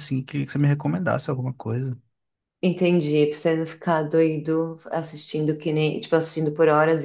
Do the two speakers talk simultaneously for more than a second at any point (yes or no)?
no